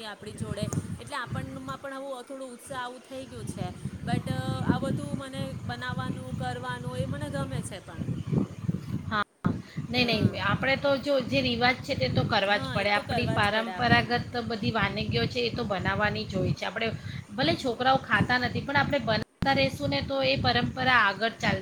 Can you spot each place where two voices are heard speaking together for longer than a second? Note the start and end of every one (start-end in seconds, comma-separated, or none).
12.6-14.2